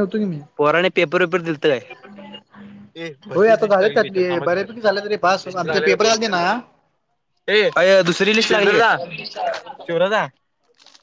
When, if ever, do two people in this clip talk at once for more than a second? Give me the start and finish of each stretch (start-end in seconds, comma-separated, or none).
3.3-6.3